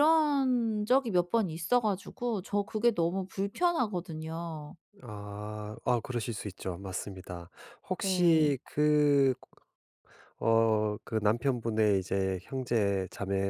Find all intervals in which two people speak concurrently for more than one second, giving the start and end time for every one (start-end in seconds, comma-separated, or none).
none